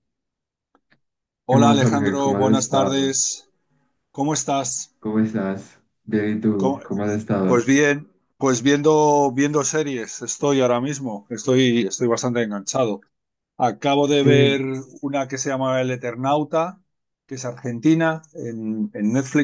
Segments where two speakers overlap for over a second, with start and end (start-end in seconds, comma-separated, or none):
1.5-3.2